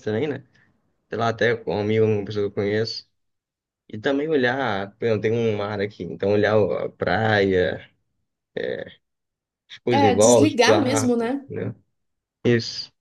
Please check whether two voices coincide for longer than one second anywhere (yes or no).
yes